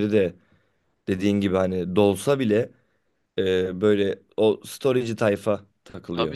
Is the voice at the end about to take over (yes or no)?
no